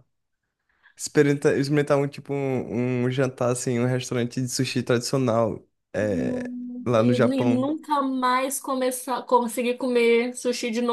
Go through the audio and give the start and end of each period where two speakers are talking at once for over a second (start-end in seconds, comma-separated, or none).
6.0-7.7